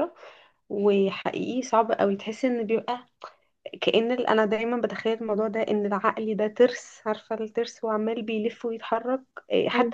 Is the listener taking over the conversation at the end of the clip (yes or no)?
no